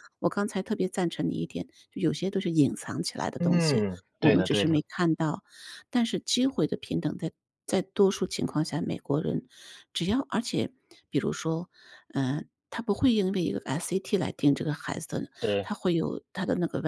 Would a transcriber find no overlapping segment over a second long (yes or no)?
no